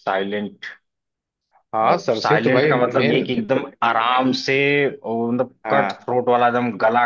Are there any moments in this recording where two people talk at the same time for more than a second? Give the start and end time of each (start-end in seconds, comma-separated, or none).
1.9-3.2